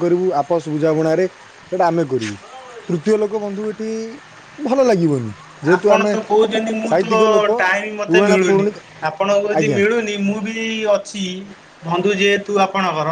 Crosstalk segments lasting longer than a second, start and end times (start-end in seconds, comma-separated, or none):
none